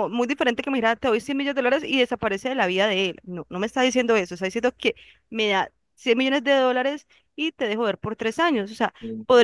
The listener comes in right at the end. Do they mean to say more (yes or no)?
no